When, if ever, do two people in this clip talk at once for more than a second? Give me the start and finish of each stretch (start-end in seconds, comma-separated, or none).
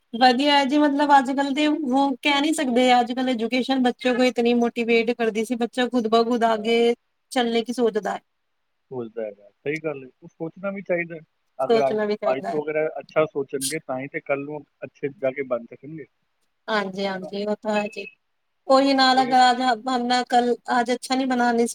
none